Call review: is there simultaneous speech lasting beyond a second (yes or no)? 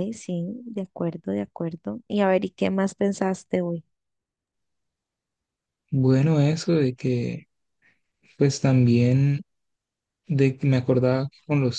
no